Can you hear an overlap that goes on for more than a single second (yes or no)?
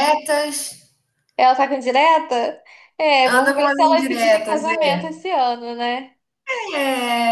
yes